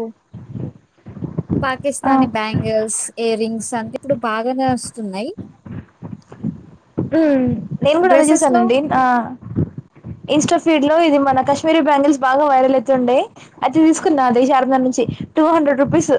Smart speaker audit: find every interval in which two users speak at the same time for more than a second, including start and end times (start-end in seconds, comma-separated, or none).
none